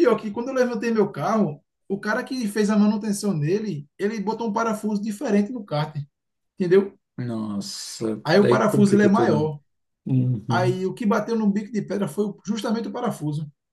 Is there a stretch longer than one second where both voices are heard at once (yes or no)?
yes